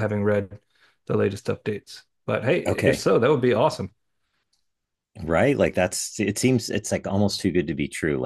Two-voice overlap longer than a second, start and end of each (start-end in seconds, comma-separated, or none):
none